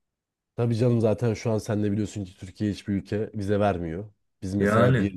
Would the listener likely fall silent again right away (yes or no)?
yes